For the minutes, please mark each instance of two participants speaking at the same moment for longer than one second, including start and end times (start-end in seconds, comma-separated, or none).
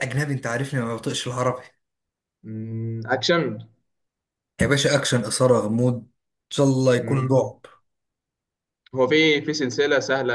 none